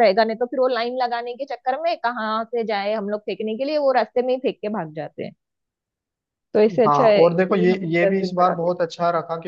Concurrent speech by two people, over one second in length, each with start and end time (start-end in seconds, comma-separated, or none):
6.9-8.7